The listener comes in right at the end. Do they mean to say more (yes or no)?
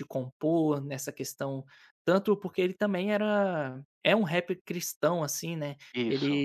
no